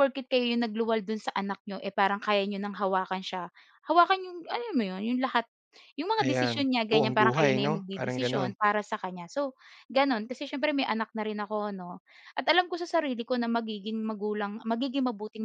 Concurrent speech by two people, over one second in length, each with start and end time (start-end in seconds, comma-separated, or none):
6.2-8.5